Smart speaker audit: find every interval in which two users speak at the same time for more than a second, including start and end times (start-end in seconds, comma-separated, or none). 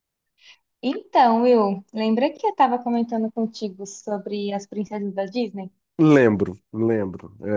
none